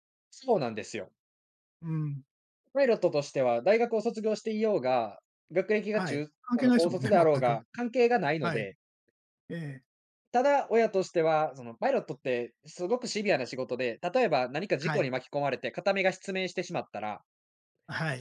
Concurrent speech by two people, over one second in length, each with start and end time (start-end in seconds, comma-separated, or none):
5.9-7.6